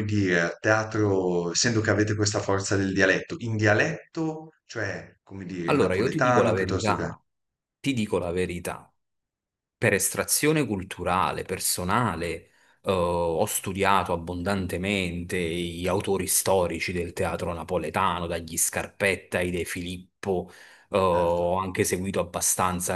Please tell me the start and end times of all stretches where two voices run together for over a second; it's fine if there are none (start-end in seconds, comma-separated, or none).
5.7-7.1